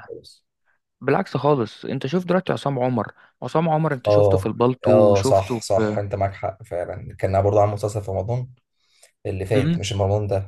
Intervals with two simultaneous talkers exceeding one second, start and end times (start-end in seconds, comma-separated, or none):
4.1-6.0